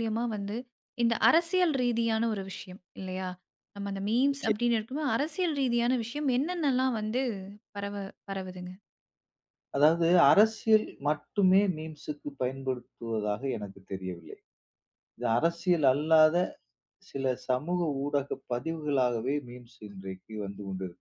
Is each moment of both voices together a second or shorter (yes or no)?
yes